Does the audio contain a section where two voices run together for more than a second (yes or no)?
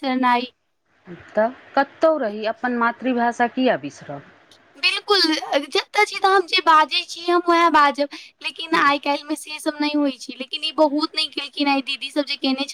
no